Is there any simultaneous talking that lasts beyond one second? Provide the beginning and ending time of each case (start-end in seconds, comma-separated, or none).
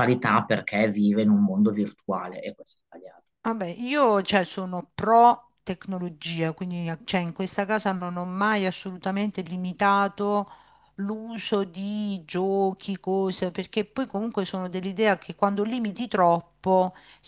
none